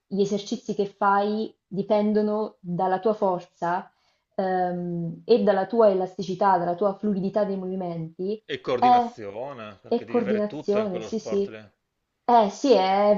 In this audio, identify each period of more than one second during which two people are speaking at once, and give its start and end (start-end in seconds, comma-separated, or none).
9.9-11.6